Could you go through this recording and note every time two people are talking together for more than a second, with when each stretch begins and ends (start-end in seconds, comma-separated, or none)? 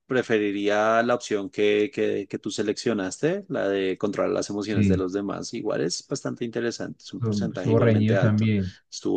7.0-8.5